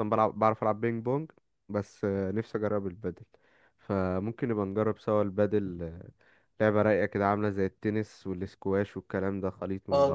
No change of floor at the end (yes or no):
no